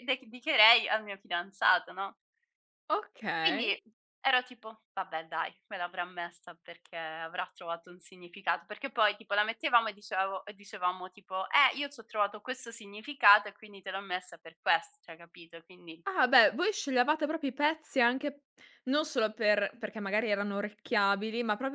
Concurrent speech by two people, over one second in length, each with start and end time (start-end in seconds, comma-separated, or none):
none